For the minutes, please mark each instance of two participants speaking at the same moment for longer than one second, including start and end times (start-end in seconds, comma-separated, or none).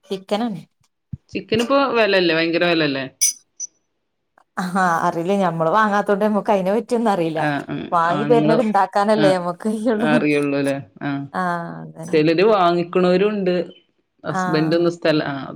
none